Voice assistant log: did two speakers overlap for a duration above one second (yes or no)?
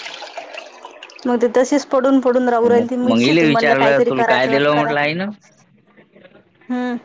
yes